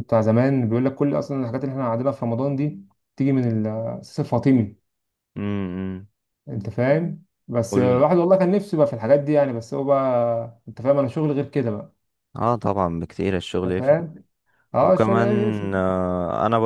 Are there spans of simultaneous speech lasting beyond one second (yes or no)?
no